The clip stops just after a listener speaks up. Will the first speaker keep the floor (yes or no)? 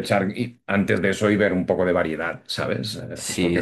no